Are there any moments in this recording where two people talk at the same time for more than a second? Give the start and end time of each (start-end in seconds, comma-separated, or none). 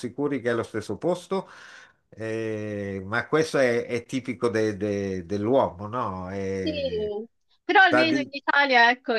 none